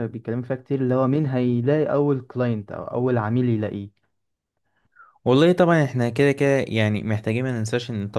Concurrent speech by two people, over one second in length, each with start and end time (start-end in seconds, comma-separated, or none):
none